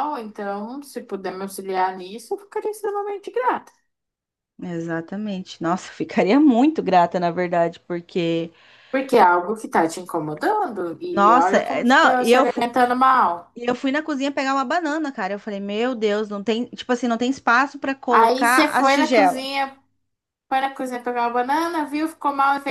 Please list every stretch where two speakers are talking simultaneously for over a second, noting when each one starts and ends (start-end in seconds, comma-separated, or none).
11.2-12.5, 18.1-19.4